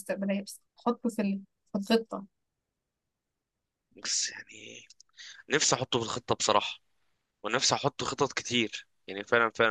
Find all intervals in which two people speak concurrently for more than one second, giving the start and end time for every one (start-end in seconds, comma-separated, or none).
none